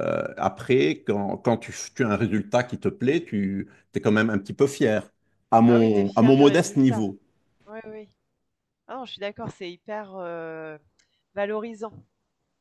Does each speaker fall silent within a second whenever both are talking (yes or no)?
no